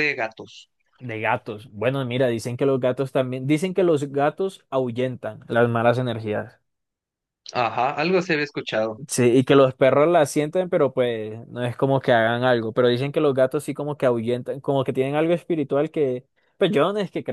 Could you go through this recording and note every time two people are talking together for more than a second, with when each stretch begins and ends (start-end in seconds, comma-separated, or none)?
none